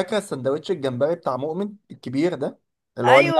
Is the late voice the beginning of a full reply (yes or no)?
yes